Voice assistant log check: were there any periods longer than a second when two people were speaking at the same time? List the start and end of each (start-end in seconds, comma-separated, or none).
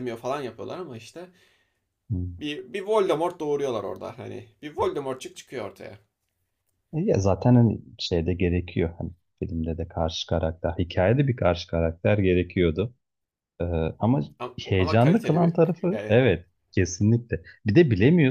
14.6-16.2